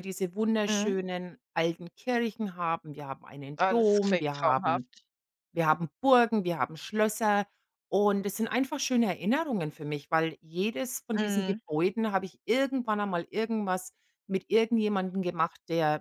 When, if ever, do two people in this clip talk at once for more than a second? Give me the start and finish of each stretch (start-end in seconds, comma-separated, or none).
3.6-4.9